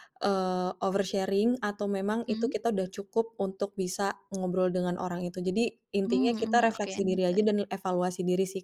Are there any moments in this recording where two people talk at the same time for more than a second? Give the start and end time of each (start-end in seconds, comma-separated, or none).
6.1-7.5